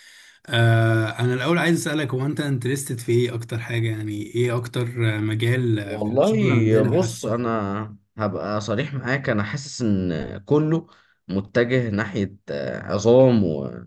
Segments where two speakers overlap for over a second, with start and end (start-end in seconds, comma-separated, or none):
5.8-7.3